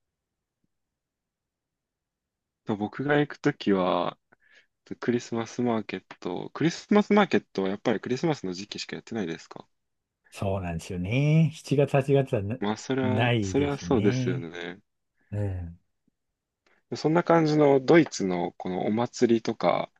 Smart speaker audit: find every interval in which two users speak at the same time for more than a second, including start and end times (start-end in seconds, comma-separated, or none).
13.0-14.5